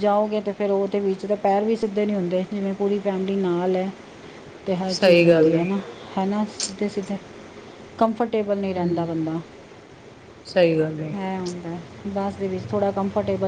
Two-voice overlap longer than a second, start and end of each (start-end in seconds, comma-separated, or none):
none